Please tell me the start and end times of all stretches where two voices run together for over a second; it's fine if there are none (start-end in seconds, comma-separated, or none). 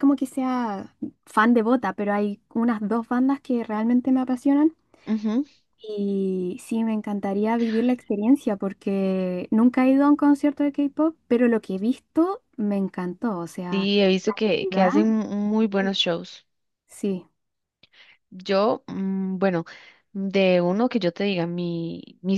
none